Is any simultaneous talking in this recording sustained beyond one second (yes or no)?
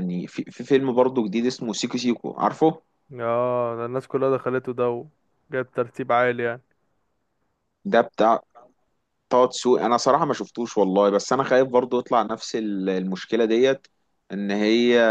no